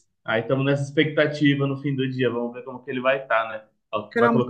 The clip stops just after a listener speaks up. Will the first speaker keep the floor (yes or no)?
yes